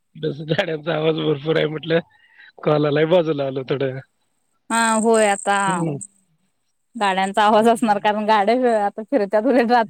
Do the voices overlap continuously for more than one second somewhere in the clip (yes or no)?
no